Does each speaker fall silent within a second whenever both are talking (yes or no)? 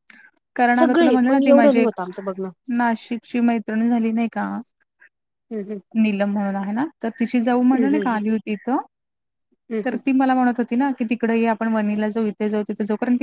no